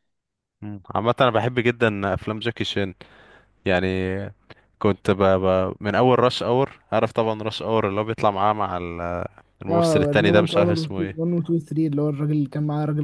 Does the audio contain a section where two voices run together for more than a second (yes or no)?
yes